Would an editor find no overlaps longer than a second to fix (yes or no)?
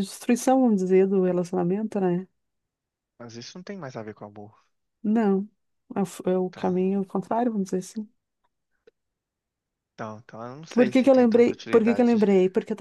no